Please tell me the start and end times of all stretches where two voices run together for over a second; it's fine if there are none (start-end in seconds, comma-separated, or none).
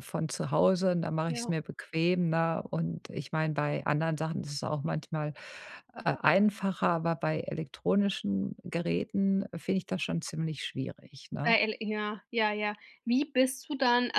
none